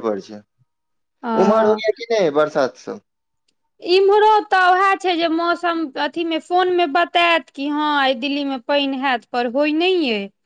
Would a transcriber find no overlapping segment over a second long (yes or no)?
yes